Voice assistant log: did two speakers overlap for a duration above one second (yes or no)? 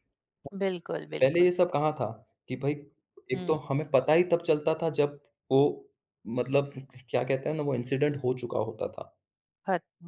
no